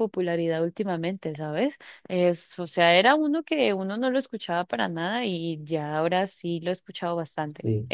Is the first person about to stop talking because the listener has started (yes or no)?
yes